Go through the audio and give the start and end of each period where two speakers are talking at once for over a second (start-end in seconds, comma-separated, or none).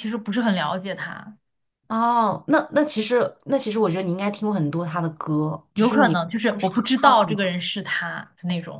5.7-7.5